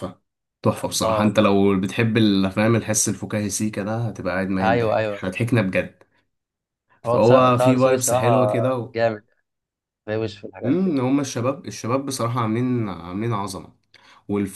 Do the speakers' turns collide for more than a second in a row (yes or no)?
yes